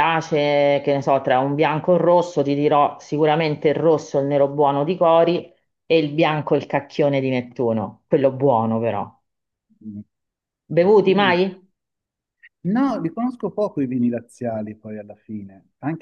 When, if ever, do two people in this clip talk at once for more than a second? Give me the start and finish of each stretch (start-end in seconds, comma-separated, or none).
none